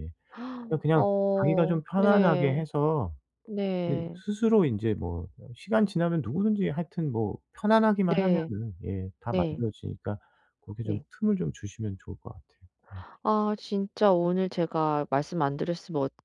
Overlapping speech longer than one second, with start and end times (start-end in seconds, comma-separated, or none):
0.9-2.6